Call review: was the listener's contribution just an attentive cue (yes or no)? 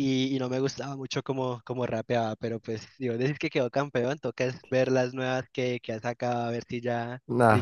no